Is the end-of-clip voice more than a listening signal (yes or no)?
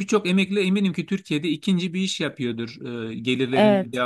no